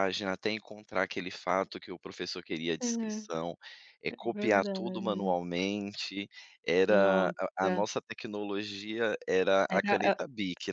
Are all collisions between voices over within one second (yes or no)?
no